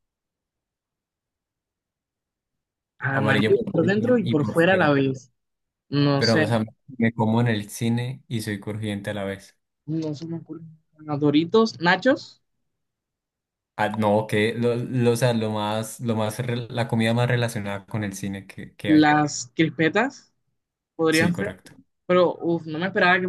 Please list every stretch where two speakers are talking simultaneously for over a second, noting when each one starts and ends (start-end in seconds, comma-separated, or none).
3.1-5.0